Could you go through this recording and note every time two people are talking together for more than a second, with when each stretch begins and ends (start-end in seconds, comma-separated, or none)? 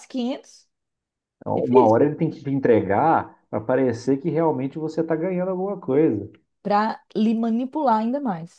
none